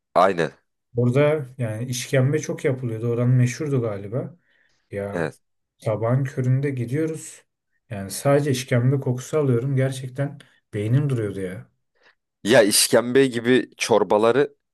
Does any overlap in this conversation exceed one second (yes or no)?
no